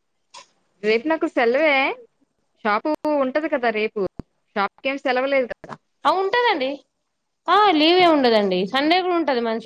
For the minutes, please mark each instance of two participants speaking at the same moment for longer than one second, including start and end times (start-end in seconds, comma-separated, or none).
none